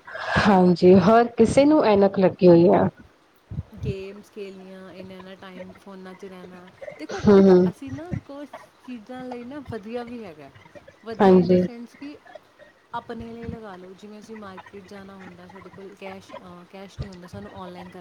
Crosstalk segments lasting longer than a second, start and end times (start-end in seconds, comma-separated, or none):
none